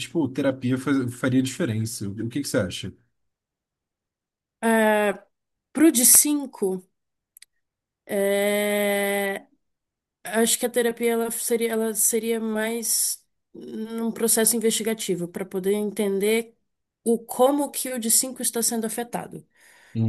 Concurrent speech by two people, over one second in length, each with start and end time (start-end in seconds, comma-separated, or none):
none